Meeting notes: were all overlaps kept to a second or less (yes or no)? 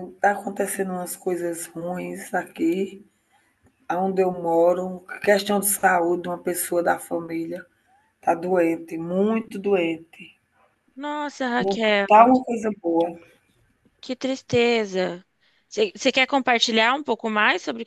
yes